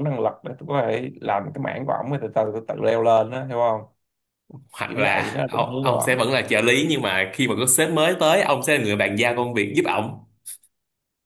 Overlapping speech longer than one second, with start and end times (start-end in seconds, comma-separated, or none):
4.8-6.3